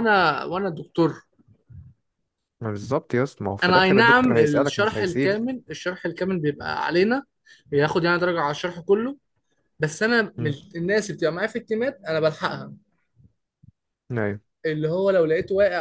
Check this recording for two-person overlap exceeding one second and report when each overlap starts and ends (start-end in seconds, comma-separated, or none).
3.6-5.5